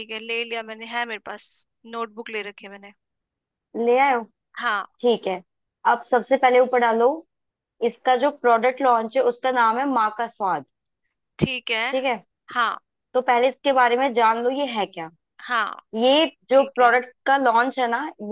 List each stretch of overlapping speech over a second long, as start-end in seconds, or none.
none